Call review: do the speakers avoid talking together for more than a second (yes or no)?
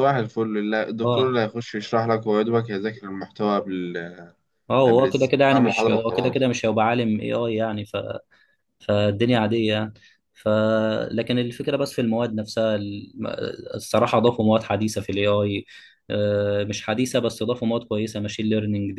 no